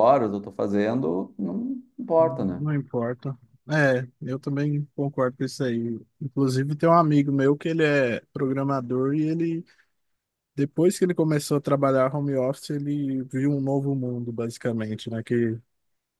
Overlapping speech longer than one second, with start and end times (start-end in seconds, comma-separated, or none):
none